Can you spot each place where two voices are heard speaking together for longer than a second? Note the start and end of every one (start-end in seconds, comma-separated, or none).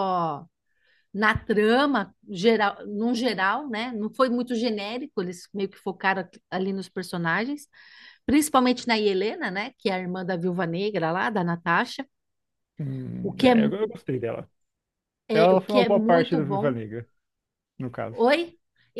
15.3-16.8